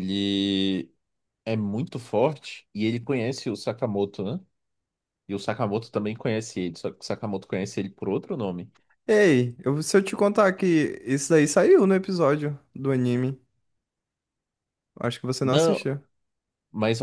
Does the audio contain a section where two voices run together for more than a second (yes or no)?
no